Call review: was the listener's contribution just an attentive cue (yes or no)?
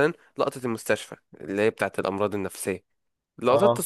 yes